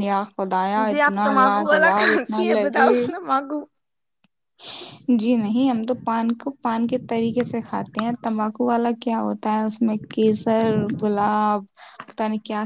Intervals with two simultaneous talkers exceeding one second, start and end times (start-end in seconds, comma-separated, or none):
0.6-2.9